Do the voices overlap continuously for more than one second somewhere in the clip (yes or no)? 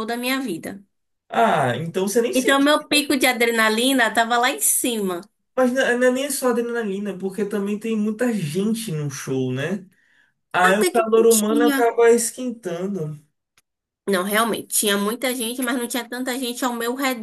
yes